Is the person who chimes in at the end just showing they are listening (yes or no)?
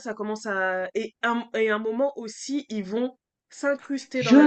no